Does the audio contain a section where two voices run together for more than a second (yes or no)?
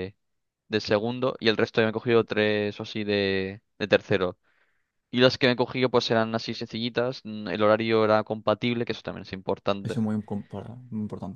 no